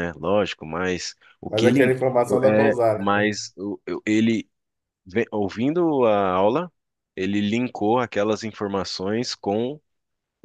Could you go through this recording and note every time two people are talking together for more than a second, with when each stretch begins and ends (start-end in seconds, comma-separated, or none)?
1.5-3.3